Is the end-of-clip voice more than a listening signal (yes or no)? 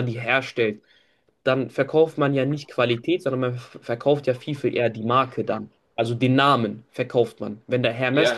yes